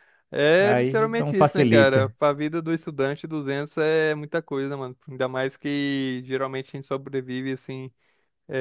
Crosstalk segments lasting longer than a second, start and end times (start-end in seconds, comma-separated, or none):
0.6-2.1